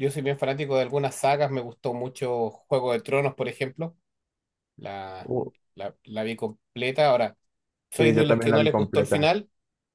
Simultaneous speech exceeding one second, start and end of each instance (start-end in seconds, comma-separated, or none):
8.0-9.3